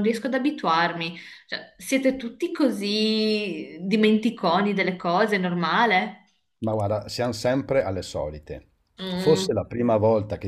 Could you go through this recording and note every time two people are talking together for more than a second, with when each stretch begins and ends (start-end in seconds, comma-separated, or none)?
none